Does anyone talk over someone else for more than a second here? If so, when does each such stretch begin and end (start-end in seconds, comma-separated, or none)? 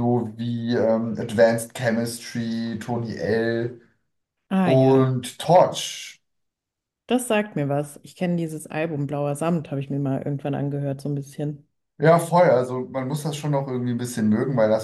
none